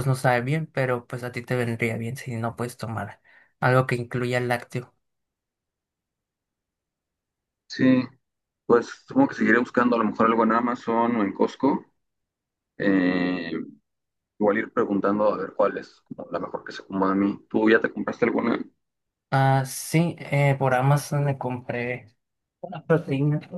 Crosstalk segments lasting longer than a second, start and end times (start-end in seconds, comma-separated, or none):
none